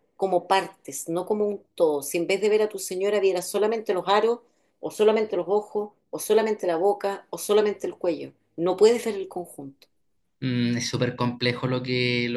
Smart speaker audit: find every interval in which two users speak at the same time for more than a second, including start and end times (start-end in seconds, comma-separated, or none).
none